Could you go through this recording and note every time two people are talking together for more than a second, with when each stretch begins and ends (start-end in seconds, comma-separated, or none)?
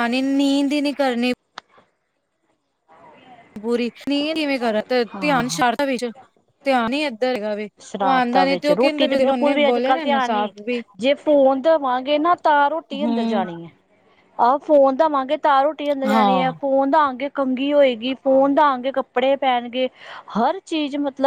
7.8-10.5